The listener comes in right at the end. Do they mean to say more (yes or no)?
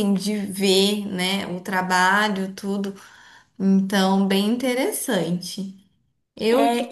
yes